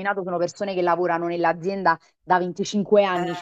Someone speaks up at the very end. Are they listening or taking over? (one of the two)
listening